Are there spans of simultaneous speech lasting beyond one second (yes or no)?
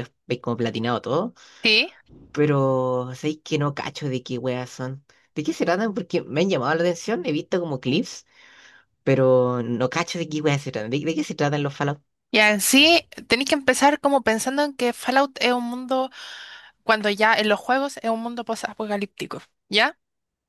no